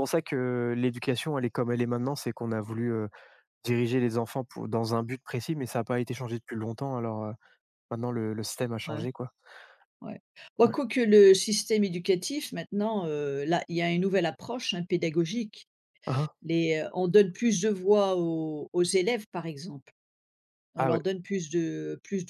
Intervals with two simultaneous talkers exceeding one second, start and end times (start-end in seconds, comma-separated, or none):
none